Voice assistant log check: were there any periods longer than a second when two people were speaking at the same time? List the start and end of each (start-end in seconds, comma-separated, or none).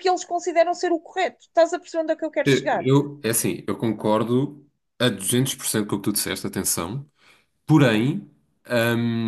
none